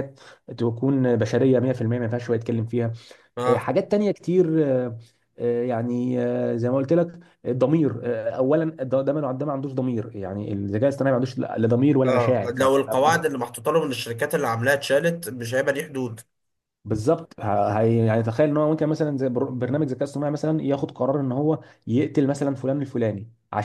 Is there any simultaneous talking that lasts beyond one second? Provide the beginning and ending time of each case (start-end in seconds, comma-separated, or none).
none